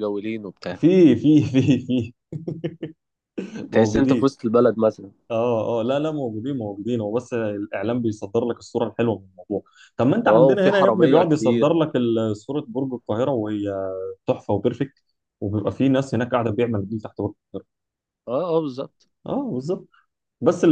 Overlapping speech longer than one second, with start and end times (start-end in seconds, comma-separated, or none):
10.3-11.8